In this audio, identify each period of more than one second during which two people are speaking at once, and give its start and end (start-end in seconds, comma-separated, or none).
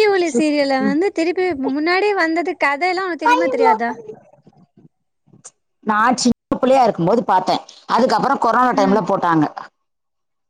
none